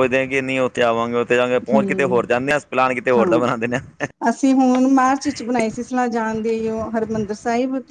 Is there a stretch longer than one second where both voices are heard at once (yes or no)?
no